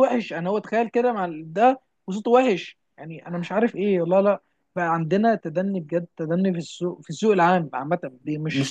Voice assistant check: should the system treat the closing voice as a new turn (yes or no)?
no